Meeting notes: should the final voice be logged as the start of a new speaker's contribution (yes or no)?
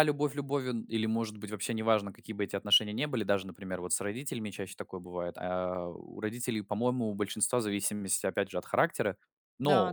no